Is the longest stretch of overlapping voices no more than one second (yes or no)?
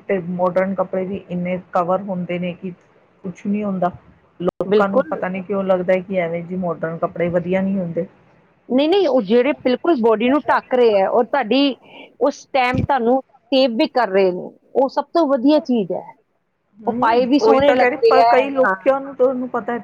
no